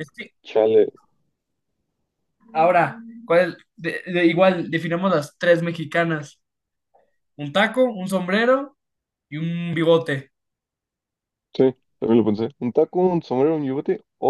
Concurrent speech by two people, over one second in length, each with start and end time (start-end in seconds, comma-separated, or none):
none